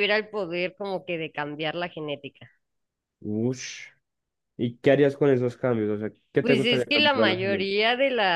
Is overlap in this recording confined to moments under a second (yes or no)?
no